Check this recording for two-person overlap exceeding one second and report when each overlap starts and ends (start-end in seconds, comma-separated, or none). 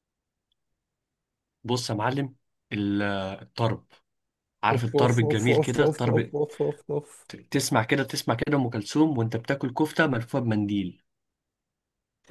4.7-6.3